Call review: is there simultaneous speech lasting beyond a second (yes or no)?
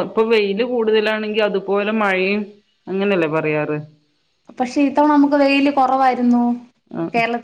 no